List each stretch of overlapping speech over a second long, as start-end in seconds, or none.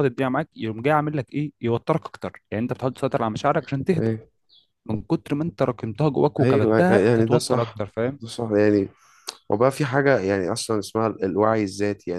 6.4-7.8